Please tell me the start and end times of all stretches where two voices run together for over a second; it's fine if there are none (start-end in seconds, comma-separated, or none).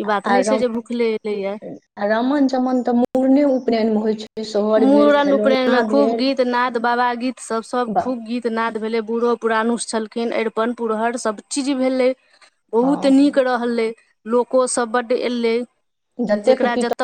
none